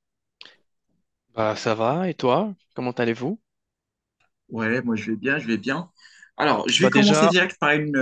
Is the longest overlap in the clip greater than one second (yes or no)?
no